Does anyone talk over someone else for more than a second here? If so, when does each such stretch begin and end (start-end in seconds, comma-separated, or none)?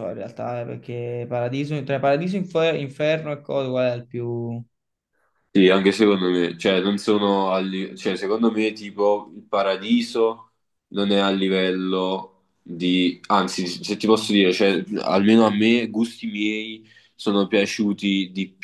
none